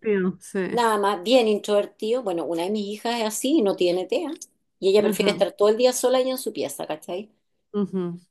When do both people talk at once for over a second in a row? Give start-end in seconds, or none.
none